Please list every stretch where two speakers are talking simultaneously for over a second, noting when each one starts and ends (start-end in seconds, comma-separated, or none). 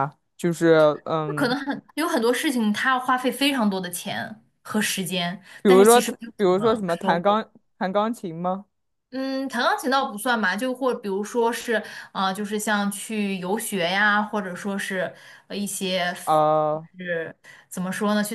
5.6-7.4